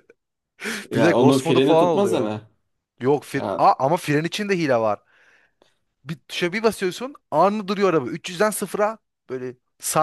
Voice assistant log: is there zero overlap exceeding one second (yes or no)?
no